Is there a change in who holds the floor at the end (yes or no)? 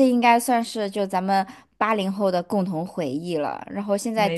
no